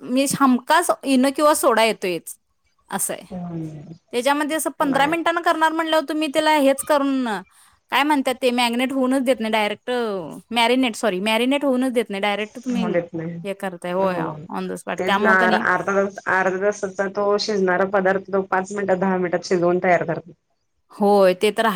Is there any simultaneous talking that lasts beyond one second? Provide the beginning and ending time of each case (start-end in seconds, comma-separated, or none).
none